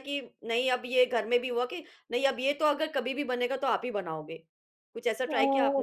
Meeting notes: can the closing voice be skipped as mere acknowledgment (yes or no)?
no